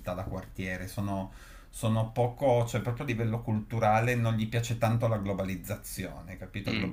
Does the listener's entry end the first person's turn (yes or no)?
no